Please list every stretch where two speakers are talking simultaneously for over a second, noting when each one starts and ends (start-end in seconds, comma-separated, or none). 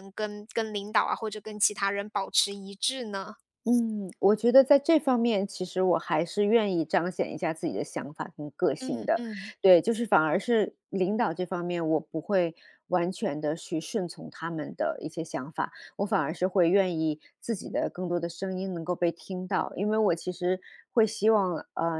none